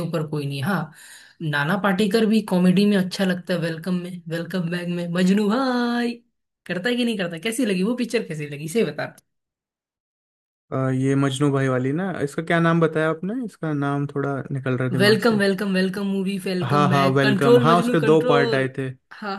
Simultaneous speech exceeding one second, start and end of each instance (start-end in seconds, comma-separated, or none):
16.6-18.6